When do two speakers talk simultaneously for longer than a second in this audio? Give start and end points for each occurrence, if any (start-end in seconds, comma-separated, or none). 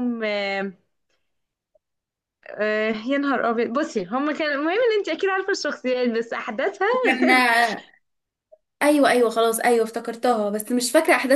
none